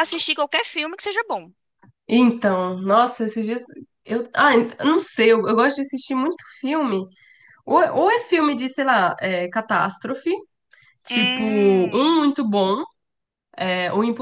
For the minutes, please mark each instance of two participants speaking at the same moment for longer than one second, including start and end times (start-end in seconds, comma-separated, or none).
11.1-12.3